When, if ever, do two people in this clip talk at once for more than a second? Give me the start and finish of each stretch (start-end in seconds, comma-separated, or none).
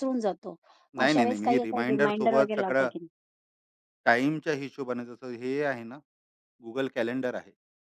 1.0-2.9